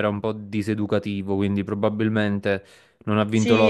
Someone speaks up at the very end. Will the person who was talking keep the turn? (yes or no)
no